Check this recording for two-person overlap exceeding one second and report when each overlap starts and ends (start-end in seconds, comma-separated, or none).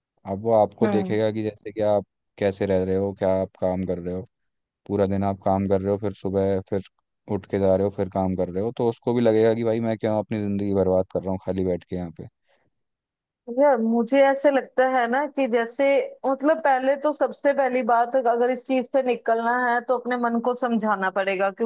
none